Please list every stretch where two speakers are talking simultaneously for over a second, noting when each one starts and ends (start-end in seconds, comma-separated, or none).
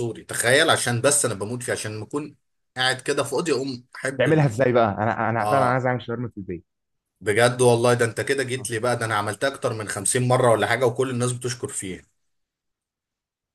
none